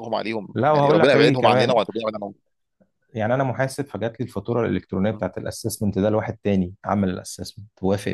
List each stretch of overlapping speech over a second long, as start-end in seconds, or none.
0.5-1.8